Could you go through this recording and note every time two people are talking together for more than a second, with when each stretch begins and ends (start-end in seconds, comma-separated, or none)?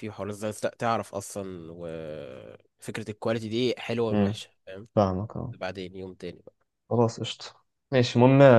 none